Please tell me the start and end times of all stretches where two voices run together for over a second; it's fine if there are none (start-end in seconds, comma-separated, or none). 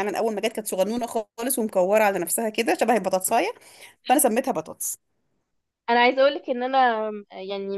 none